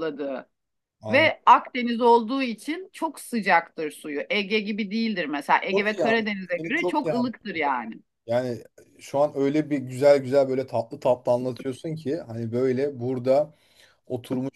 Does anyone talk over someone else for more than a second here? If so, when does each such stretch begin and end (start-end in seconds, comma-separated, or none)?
5.7-7.3